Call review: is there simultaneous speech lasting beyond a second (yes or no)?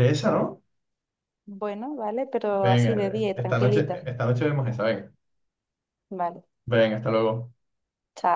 yes